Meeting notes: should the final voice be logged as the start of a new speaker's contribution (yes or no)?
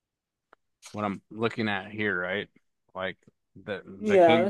yes